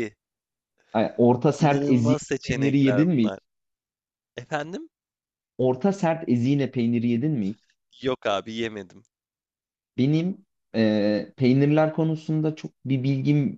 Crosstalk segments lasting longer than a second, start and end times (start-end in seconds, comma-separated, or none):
1.6-3.3